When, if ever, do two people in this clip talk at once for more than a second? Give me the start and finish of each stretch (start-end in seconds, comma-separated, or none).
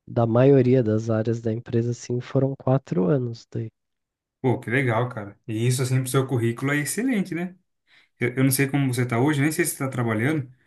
none